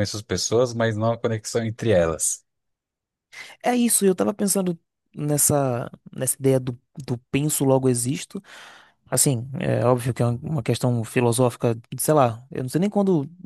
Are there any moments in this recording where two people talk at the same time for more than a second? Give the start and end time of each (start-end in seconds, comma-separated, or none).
none